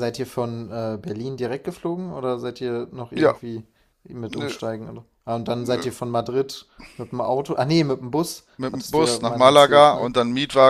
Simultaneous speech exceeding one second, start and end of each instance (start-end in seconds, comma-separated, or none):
8.6-10.1